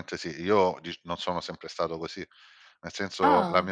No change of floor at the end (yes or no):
yes